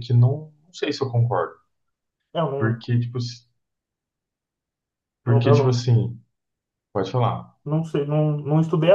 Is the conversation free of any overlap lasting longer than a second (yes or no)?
yes